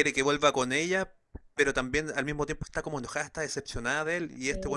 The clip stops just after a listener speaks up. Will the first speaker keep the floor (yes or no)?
yes